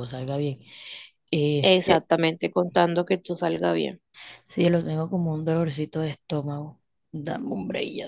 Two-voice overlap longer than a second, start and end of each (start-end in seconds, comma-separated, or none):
none